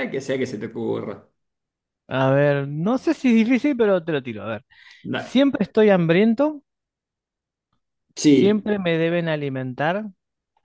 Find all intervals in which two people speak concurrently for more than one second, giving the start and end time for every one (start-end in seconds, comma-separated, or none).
none